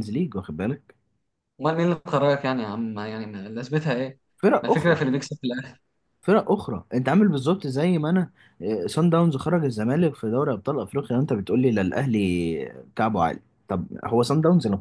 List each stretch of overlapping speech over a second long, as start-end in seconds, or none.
none